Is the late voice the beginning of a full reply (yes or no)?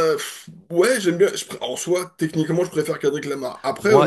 yes